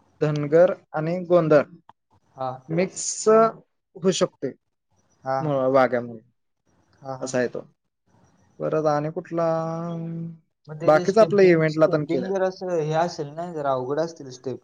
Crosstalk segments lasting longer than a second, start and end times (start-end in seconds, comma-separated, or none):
10.8-12.3